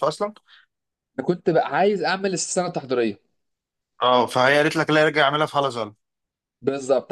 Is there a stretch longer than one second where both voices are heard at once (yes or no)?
no